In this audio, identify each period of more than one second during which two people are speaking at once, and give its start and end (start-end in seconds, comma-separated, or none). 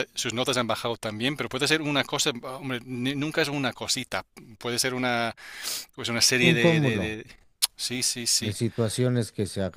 none